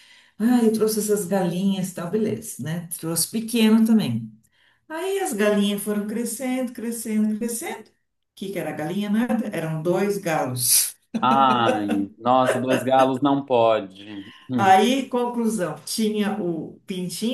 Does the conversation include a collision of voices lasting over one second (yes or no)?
no